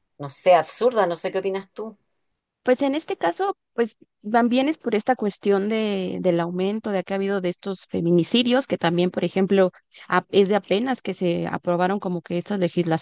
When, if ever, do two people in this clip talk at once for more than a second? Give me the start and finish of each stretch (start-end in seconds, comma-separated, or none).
none